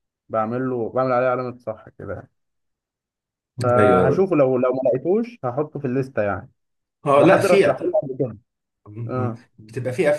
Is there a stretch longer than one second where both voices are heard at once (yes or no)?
no